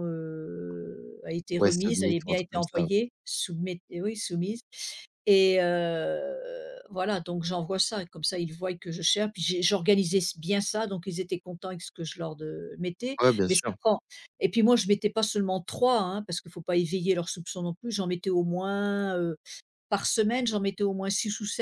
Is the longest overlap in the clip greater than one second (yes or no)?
yes